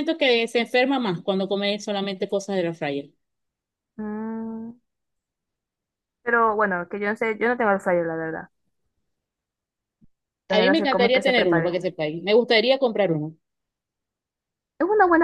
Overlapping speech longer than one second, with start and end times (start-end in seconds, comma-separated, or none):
10.5-11.8